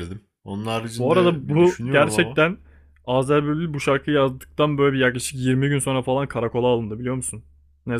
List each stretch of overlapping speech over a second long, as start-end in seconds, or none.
1.0-2.4